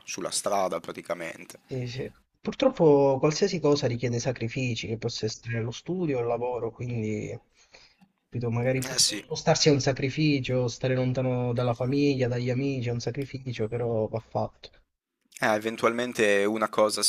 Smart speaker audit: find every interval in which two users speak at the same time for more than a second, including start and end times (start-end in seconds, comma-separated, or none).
none